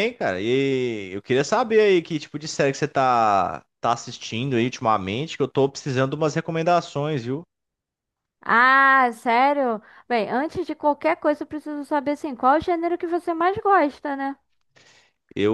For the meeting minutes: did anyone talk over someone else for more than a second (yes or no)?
no